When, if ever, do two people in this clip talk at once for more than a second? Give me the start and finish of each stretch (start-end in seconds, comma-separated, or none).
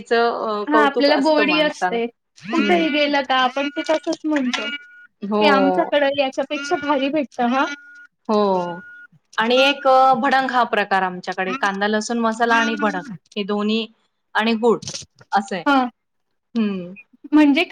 0.7-2.0